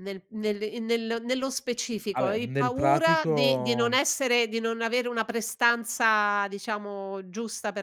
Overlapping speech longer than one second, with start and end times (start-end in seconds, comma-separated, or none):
2.1-4.0